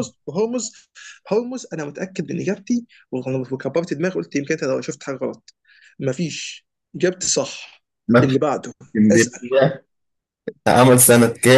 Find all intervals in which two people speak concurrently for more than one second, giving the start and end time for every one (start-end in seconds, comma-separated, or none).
none